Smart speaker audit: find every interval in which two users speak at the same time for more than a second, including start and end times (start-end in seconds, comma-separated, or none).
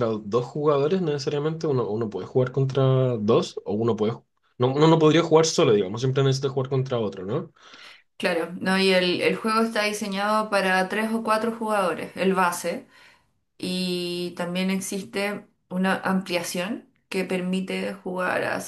none